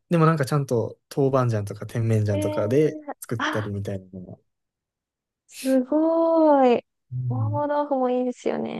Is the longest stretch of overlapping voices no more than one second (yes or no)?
no